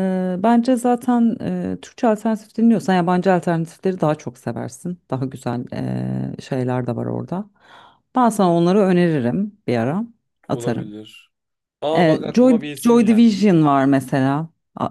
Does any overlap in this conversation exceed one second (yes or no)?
yes